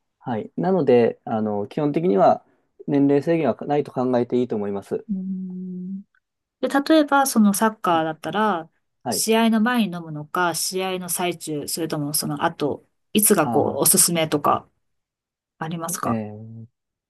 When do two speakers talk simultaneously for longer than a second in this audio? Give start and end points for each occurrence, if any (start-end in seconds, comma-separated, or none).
none